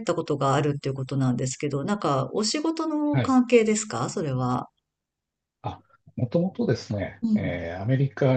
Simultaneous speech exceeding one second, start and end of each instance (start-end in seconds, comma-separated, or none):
none